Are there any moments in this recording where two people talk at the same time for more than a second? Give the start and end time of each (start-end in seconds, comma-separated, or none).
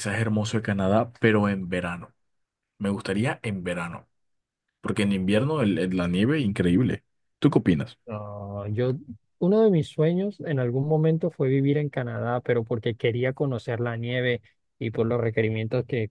none